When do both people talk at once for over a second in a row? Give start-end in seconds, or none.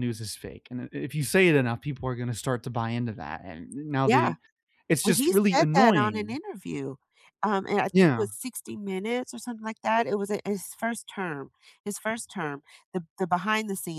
5.0-6.4